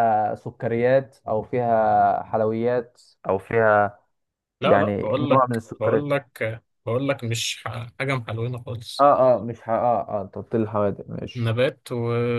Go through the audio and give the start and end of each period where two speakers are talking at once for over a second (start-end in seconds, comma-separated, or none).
4.6-6.1